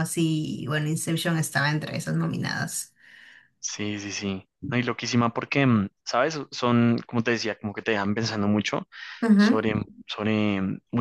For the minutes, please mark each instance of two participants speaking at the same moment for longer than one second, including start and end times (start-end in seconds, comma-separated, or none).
none